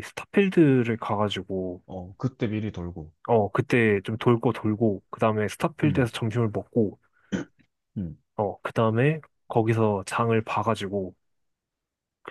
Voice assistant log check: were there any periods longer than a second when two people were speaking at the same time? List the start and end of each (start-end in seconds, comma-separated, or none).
none